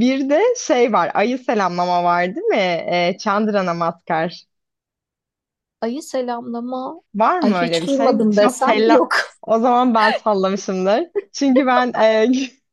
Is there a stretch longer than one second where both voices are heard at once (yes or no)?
yes